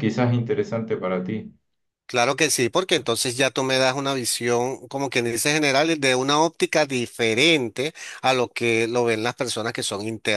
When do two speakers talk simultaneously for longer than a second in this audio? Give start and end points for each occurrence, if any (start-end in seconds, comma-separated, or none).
none